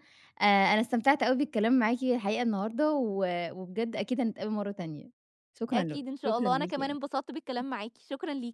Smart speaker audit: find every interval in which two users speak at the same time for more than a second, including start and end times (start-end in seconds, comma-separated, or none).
5.7-7.0